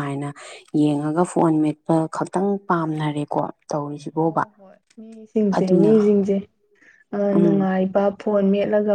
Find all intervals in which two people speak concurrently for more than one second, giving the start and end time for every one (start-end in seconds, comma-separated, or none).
none